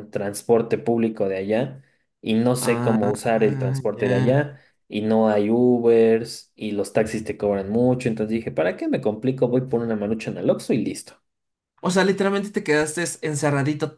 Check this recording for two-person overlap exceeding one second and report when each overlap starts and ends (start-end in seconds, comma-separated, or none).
2.6-4.0